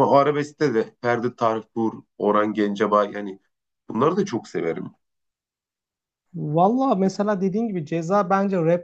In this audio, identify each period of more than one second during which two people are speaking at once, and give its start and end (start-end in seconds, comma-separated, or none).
none